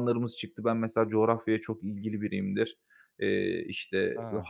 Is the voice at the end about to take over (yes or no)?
no